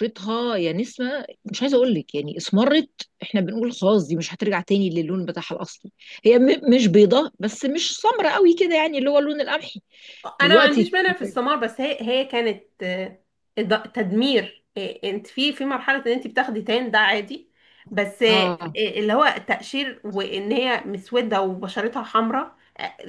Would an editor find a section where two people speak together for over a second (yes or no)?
no